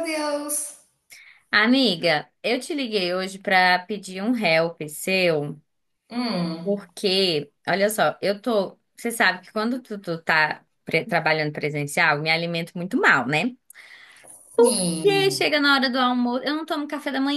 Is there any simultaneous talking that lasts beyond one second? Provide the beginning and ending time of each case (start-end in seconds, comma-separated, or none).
none